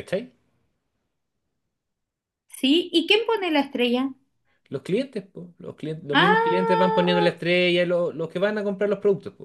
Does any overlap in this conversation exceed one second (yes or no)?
yes